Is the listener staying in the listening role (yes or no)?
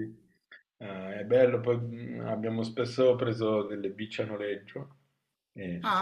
no